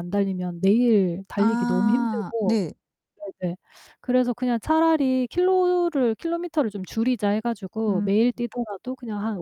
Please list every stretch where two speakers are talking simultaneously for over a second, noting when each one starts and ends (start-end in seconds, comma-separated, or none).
1.4-2.6